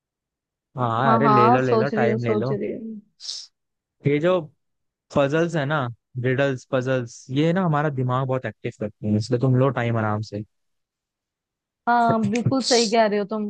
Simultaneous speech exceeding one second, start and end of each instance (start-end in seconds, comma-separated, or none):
1.1-2.5